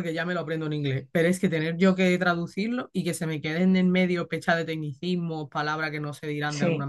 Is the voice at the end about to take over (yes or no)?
no